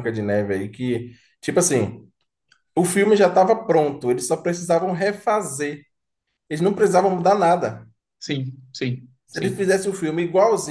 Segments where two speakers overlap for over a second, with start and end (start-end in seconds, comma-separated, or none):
none